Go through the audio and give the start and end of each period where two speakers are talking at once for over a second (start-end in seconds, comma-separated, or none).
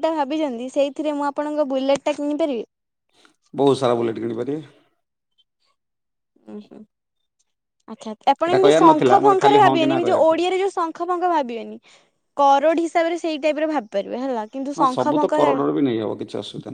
8.4-10.4